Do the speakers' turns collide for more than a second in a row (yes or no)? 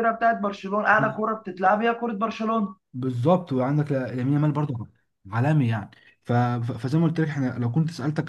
no